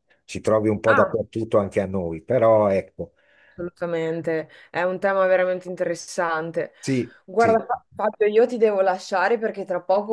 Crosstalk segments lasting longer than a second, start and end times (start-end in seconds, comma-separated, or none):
none